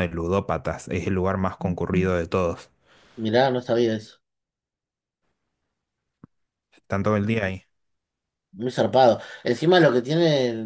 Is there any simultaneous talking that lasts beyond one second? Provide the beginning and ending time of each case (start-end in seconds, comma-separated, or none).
none